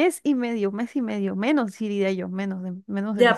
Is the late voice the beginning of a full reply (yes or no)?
yes